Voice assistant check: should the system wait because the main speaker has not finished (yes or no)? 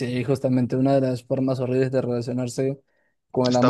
yes